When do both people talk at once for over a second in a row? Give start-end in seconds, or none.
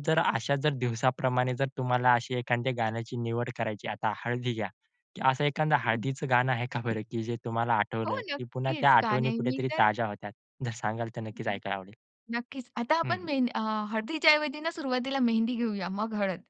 8.1-9.9